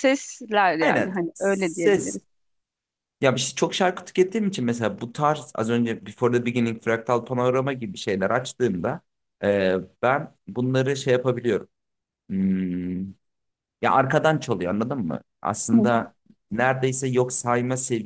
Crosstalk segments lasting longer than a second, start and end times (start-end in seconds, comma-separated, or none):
0.8-2.2